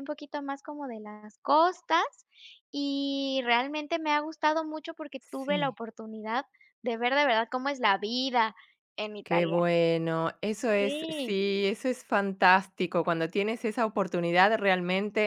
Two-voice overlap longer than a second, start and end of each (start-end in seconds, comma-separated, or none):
none